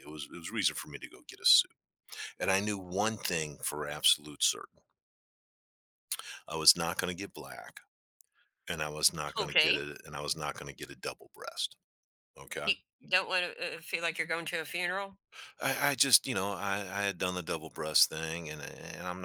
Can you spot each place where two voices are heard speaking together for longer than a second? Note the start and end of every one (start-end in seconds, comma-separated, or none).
none